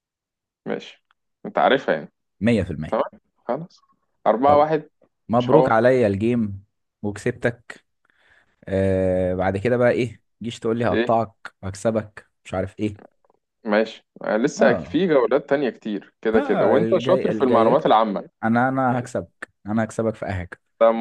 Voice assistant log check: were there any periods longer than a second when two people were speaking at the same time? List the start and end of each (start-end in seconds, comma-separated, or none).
16.3-18.0